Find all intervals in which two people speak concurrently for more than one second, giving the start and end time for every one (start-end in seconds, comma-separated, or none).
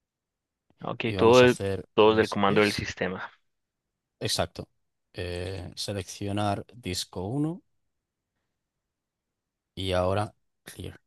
1.1-2.9